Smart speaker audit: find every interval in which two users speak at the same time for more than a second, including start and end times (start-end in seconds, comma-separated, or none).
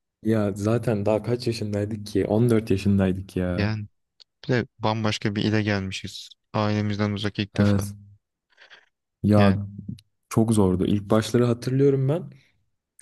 none